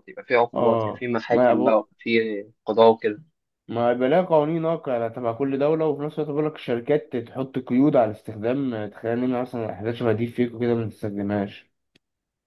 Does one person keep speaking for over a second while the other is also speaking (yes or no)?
yes